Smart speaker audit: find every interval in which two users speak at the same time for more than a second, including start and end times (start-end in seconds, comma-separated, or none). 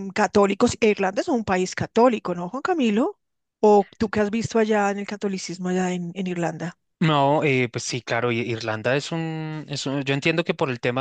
none